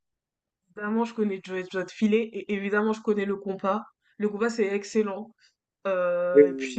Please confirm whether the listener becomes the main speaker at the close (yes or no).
no